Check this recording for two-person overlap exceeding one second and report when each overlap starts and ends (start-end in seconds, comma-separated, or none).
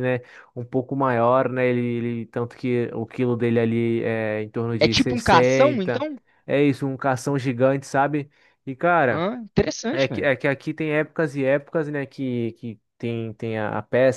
4.8-6.1